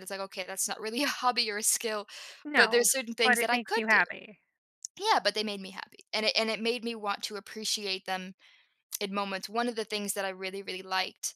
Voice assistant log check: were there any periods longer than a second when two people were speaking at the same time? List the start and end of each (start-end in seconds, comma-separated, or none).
2.5-4.0